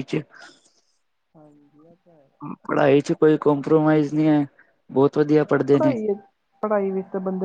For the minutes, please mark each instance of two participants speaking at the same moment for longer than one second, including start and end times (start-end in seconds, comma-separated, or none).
none